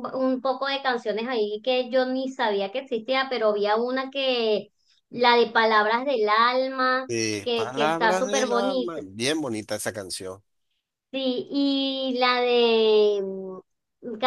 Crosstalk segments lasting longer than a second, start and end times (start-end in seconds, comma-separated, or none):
7.1-9.0